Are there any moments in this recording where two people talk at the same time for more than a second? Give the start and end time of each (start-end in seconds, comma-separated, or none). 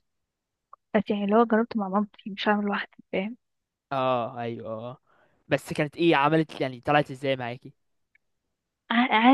none